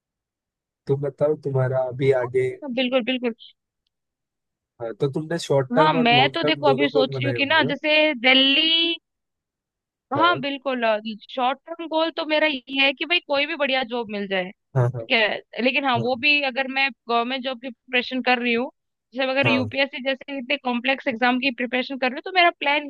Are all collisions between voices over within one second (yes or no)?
no